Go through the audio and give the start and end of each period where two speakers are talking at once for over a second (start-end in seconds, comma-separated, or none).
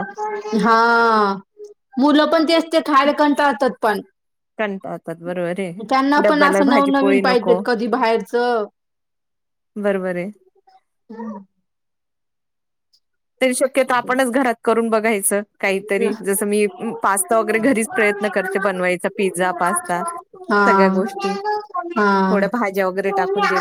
6.2-7.6